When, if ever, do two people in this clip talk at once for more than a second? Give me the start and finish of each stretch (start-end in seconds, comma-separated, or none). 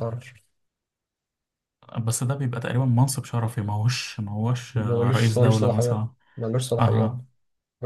4.7-6.1